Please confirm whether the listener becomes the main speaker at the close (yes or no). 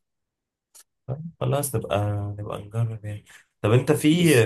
no